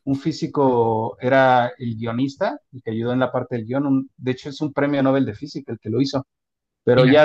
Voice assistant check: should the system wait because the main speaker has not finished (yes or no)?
yes